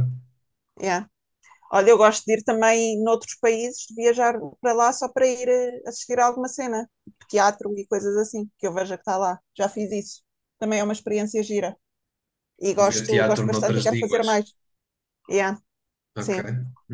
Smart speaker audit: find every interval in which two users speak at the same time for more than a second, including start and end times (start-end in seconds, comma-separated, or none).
12.9-14.3